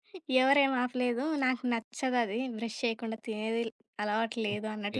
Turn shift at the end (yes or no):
yes